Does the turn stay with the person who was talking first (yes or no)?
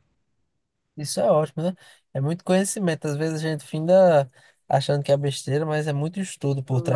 no